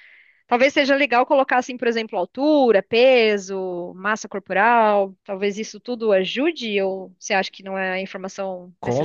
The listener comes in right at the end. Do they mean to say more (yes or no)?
yes